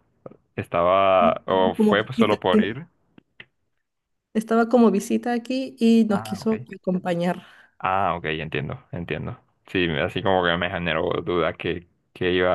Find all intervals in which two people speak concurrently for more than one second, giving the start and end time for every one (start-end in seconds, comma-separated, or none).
1.2-2.8